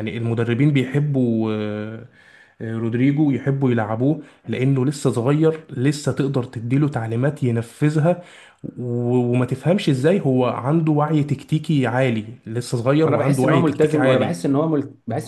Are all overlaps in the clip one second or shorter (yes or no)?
no